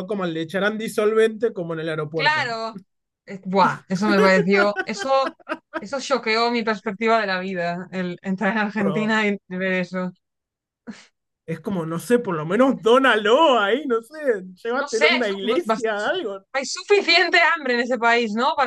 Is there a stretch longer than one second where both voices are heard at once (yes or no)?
yes